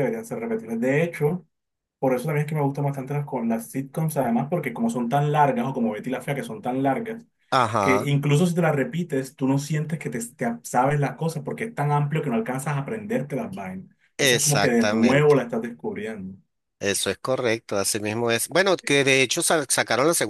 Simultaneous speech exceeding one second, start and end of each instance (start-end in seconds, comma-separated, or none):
14.2-15.4